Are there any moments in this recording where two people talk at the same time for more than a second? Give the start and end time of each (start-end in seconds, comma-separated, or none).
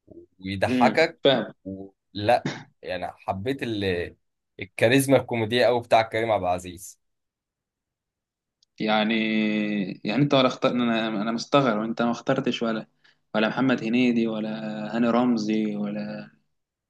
none